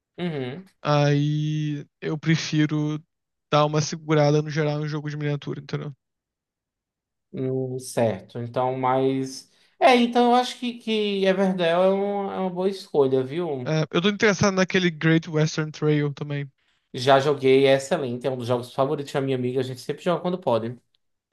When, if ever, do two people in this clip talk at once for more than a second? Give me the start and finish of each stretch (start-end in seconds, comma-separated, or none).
none